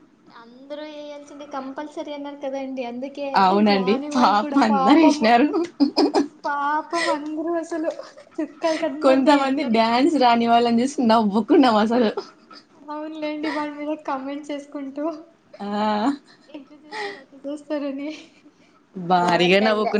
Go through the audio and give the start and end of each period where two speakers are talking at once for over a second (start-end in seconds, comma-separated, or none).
3.4-5.3